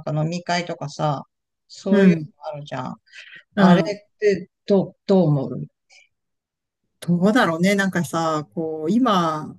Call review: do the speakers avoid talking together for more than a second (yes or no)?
yes